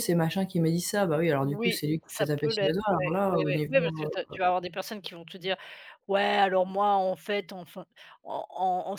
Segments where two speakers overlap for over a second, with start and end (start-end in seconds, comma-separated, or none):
1.4-4.3